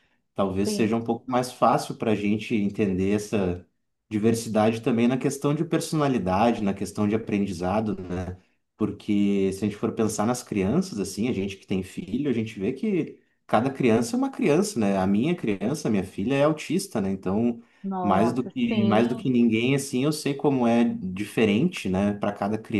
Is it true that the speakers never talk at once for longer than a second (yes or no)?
no